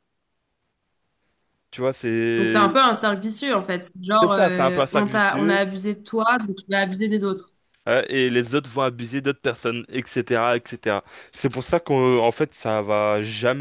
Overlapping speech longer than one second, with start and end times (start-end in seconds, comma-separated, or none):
4.2-5.6